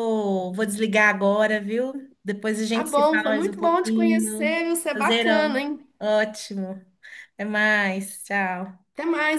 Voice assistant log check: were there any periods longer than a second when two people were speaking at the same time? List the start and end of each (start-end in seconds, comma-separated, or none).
2.7-5.9